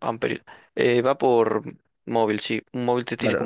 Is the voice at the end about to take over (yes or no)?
yes